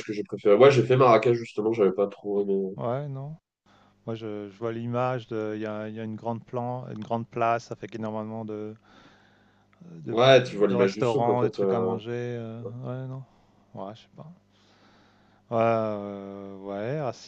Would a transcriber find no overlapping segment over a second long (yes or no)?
no